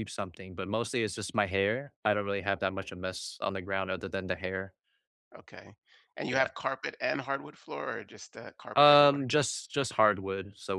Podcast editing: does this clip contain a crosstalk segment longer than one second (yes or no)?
no